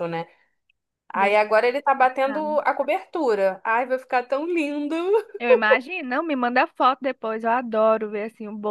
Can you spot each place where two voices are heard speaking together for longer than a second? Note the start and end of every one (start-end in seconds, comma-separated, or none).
none